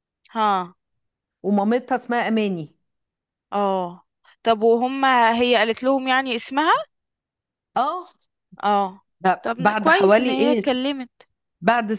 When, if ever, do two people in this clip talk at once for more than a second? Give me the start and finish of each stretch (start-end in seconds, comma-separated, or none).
9.4-10.7